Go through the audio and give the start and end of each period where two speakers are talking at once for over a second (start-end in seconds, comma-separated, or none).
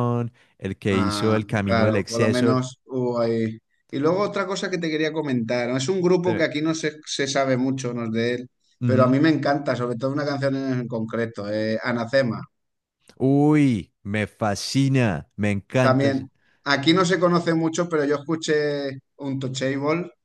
0.9-2.6